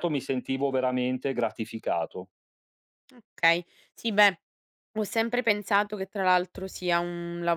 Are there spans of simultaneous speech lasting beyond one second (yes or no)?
no